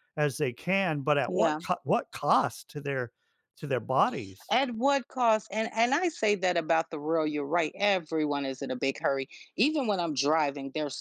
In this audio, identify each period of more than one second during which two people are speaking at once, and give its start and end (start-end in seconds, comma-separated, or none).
none